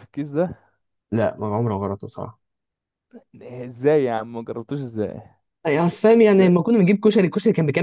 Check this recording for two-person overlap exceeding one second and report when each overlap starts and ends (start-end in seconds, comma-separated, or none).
none